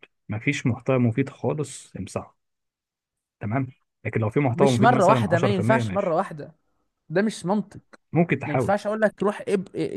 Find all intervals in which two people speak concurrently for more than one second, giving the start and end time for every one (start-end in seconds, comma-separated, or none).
4.5-6.2